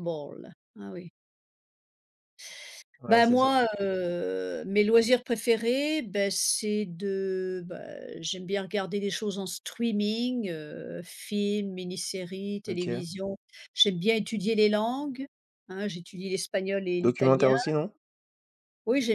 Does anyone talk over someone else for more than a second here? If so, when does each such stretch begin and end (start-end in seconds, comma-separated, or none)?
none